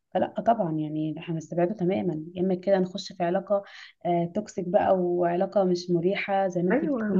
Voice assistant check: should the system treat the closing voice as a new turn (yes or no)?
yes